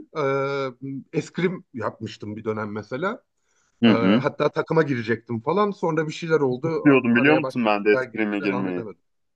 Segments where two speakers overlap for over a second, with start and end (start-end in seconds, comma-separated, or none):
6.8-8.8